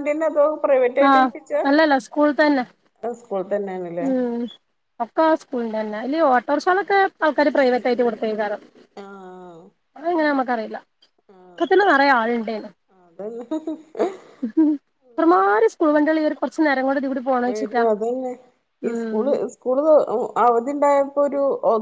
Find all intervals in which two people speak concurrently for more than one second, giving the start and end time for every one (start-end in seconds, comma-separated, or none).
none